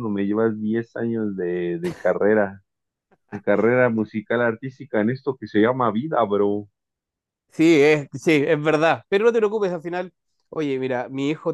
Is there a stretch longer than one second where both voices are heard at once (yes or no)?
no